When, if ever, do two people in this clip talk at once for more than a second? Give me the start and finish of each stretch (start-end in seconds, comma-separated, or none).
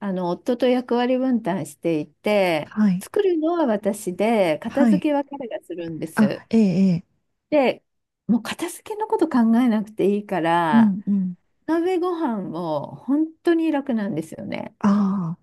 none